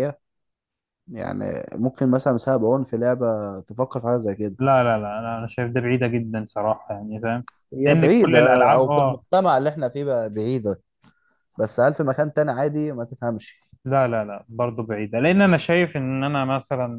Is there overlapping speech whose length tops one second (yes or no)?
yes